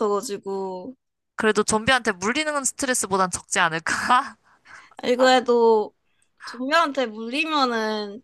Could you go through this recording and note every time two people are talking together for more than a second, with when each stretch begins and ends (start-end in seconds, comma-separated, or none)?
none